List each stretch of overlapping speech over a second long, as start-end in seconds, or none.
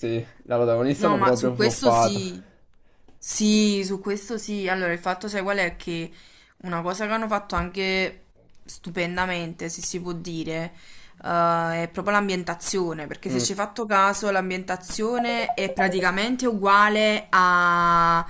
1.0-2.2